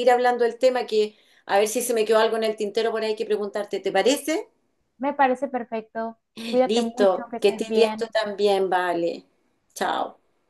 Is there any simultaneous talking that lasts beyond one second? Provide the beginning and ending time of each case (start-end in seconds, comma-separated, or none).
6.7-8.1